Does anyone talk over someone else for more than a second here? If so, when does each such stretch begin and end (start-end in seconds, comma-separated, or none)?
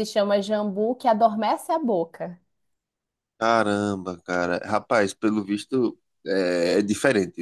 none